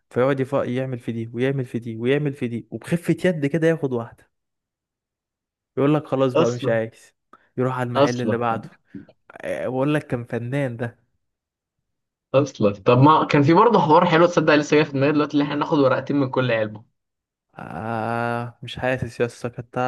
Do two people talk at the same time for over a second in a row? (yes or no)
no